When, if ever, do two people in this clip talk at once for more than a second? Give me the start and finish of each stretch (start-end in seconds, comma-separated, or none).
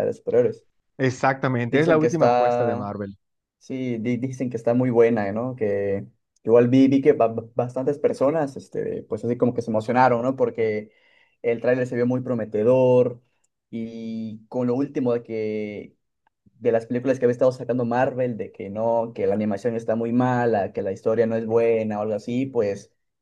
1.6-2.9